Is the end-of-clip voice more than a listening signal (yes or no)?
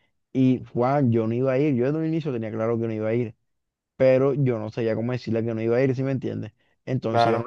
no